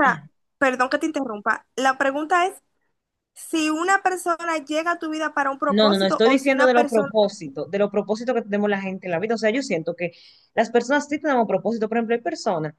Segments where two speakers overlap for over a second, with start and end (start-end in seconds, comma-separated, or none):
5.7-7.1